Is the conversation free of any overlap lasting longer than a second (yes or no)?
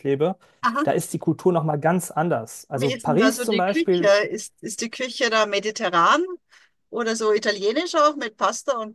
no